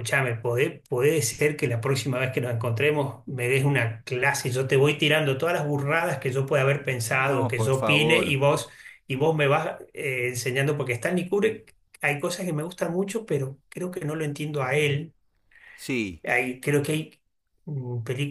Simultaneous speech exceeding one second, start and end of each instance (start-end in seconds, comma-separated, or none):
7.1-8.4